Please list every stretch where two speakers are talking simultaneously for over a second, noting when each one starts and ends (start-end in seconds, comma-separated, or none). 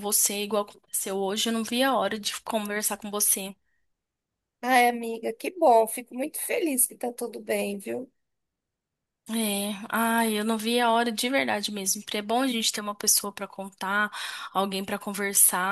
none